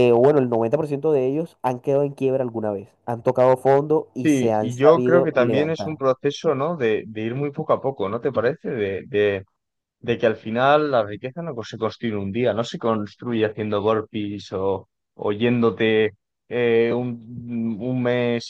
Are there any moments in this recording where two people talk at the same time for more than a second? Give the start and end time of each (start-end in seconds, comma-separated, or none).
4.2-6.0